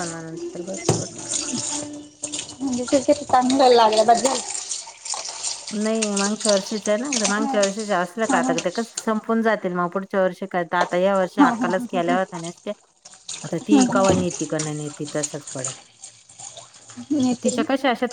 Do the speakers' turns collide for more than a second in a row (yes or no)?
yes